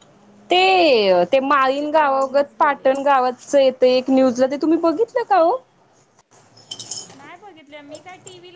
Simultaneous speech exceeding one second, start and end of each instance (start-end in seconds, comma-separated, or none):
1.4-2.9